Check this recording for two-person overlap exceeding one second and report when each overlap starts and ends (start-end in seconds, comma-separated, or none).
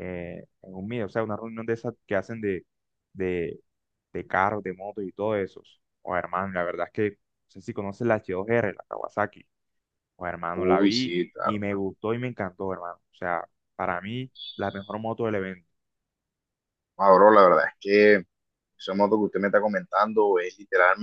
10.5-11.8